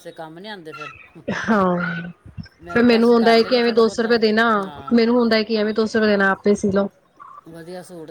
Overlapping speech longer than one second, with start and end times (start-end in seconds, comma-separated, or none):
2.7-4.2